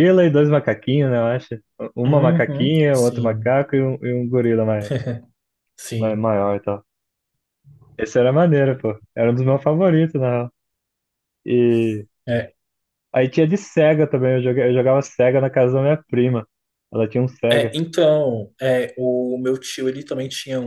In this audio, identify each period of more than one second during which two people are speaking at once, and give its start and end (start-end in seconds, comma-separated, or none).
2.1-3.6